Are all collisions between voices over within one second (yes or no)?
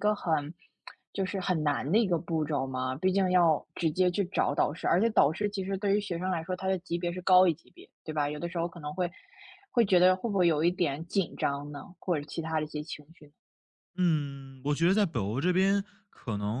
yes